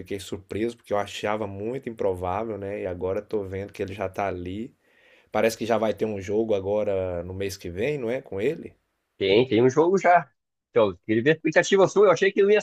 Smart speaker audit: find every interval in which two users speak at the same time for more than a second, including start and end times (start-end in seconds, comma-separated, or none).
none